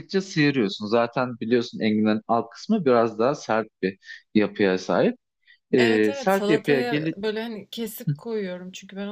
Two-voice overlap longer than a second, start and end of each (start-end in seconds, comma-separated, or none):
5.8-7.2